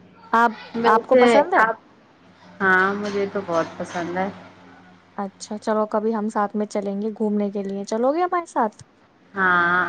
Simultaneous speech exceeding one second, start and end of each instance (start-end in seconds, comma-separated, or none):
none